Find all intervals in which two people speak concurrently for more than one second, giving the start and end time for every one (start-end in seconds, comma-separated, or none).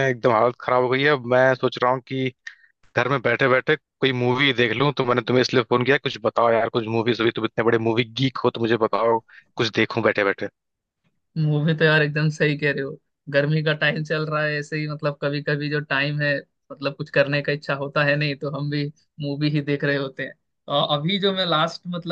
none